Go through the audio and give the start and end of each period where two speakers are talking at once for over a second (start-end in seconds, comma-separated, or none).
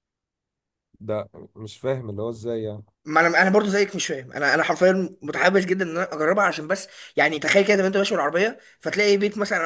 none